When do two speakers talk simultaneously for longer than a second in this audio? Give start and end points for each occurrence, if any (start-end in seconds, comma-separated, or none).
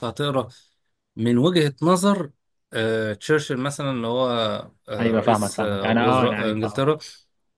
5.0-6.8